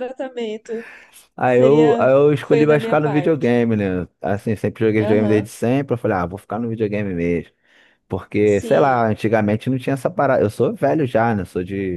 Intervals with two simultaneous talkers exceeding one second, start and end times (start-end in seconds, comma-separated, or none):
1.4-3.5